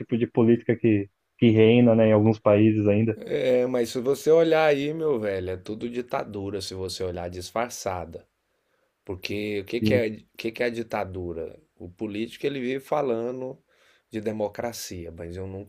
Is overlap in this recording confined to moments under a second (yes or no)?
yes